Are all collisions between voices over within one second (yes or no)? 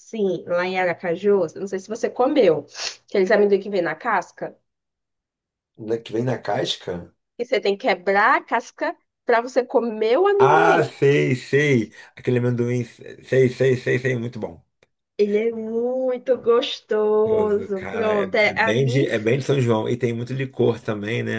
no